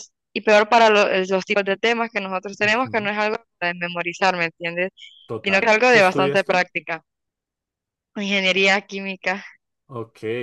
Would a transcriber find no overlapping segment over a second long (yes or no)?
no